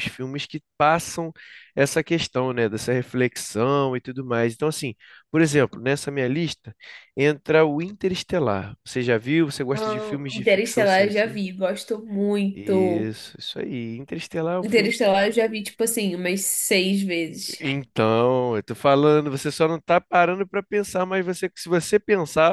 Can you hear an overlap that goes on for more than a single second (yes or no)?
yes